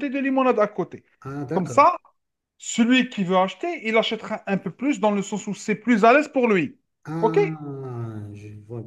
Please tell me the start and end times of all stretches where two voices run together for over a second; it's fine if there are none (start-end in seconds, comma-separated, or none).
none